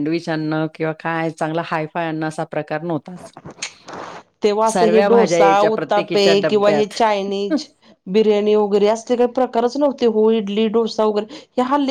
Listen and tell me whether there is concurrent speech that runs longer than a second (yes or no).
yes